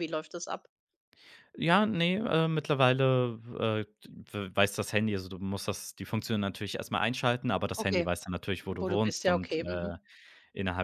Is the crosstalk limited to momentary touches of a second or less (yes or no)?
no